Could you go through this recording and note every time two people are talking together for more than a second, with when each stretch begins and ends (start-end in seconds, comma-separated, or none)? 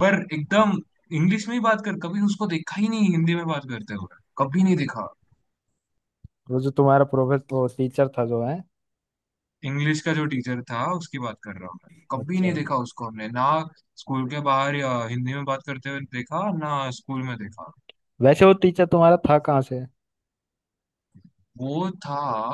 none